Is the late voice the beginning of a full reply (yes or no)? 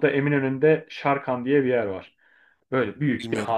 no